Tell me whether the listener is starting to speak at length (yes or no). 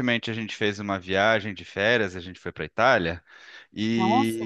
no